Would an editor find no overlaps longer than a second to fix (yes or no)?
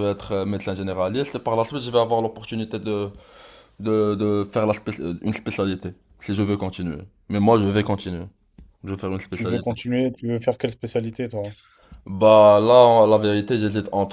yes